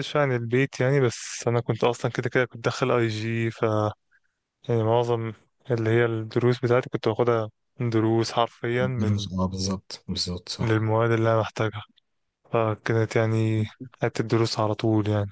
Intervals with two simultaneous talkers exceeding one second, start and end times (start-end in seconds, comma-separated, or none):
none